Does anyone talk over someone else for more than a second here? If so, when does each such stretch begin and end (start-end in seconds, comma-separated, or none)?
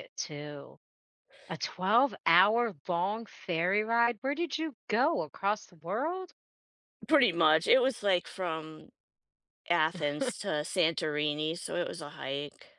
none